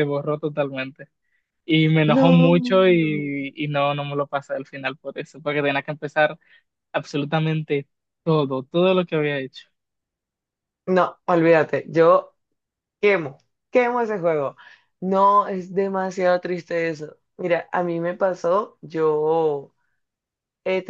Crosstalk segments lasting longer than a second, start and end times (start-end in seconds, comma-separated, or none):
2.1-3.3